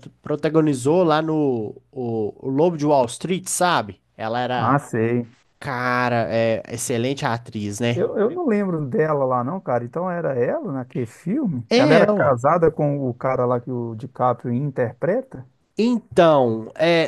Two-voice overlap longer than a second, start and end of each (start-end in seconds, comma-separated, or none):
none